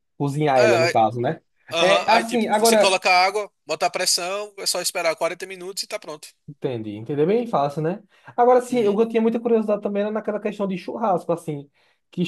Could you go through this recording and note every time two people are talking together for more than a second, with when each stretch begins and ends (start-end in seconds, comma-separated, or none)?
1.8-3.0